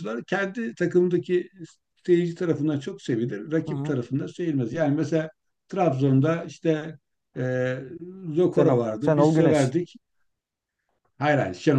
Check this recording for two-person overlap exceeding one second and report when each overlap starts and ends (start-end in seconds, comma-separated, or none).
8.6-9.8